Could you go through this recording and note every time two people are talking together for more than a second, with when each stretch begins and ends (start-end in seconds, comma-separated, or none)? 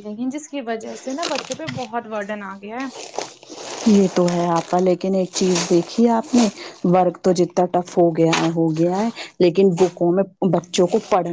none